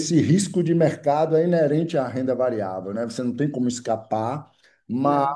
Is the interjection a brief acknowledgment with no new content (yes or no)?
yes